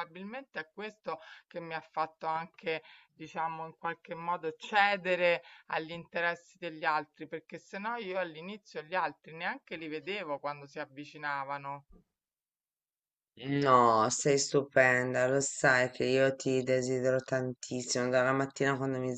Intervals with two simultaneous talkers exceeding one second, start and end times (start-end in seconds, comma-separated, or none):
none